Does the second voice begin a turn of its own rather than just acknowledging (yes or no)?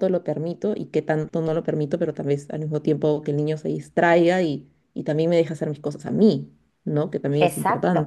yes